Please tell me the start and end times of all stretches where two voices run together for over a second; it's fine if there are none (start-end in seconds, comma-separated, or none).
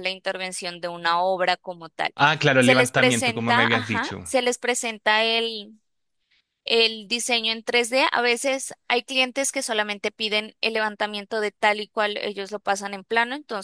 2.6-4.3